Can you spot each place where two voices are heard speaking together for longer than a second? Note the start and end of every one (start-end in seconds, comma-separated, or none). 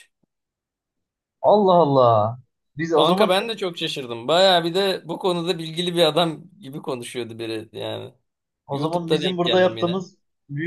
8.7-10.0